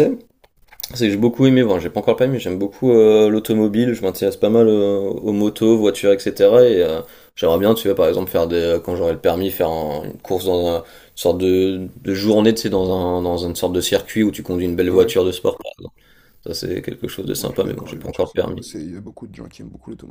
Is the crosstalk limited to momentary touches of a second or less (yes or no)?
no